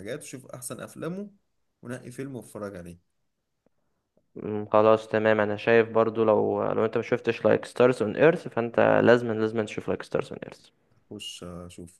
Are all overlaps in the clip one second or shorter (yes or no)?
yes